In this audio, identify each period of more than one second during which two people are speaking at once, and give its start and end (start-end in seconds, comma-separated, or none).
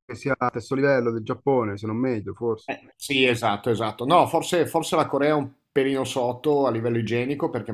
none